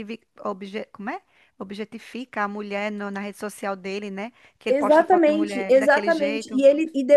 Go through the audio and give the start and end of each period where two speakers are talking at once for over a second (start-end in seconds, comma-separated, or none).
4.7-6.7